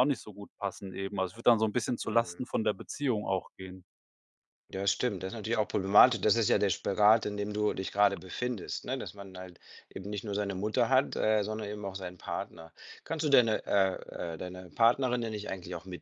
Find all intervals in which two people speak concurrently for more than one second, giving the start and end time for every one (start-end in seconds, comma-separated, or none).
none